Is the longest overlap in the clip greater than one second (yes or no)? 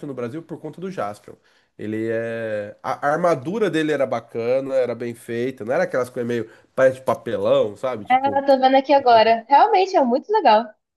no